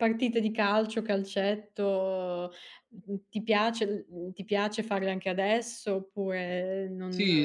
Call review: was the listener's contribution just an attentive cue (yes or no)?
no